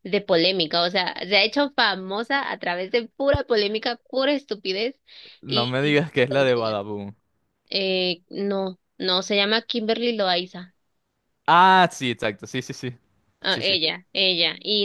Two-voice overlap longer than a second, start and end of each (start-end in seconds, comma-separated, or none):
5.5-6.8